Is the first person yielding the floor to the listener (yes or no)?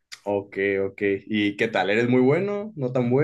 yes